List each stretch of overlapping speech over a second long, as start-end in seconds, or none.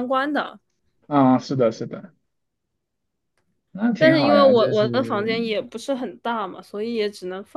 4.0-5.3